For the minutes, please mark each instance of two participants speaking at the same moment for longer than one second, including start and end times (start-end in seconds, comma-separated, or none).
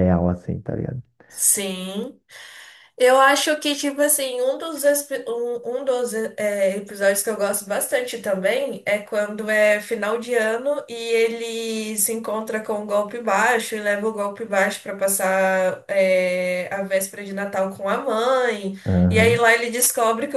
none